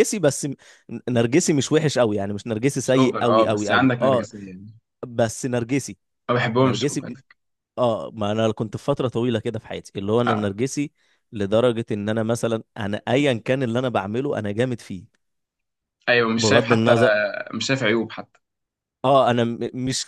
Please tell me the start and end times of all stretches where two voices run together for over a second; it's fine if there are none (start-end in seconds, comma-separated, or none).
2.8-4.3